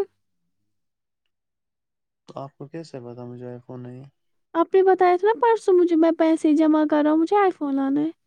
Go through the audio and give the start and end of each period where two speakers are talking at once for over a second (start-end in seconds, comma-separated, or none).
none